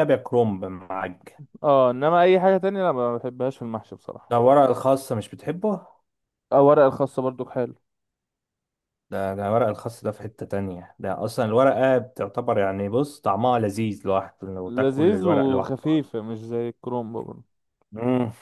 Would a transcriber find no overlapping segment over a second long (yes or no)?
no